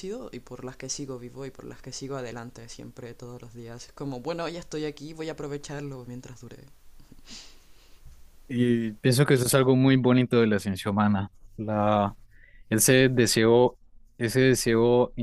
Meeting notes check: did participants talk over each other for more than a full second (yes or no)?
no